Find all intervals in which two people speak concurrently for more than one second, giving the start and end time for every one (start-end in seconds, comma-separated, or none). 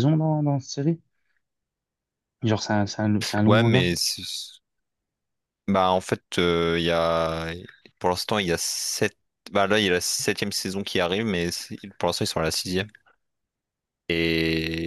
none